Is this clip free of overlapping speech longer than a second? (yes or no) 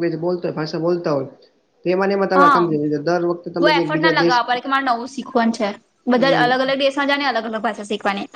yes